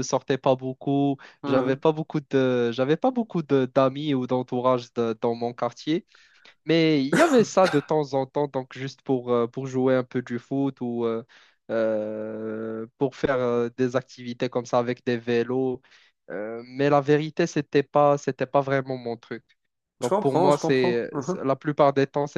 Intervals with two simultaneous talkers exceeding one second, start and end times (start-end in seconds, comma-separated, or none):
20.0-21.5